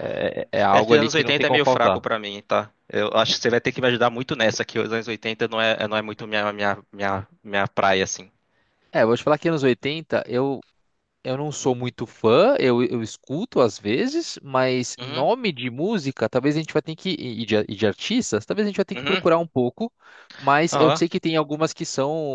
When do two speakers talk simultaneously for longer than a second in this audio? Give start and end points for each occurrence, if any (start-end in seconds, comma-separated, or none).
0.7-2.0